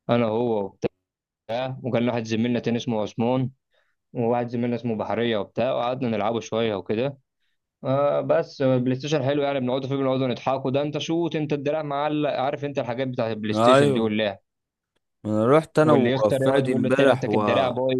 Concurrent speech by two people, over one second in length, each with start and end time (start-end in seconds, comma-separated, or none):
15.8-17.4